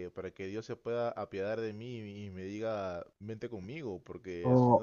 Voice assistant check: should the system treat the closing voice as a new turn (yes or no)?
yes